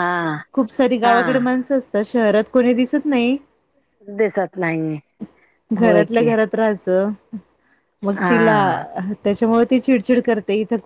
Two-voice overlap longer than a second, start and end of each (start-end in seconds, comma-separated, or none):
none